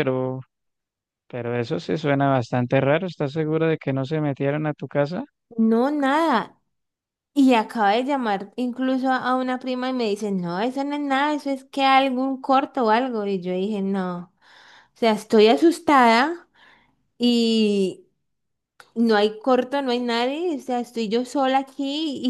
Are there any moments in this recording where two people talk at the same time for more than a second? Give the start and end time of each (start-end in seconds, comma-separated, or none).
none